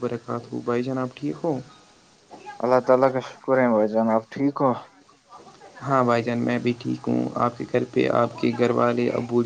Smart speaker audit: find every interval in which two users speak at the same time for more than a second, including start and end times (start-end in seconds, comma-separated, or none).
none